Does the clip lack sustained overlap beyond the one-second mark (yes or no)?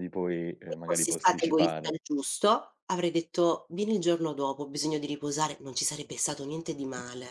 no